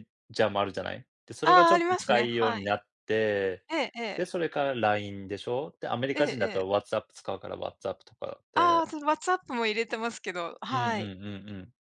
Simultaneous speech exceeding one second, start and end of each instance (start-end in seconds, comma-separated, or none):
1.4-2.7